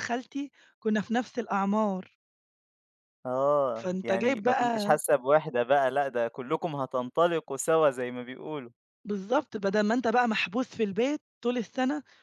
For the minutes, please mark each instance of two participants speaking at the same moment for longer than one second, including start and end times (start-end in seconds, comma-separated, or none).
3.7-5.0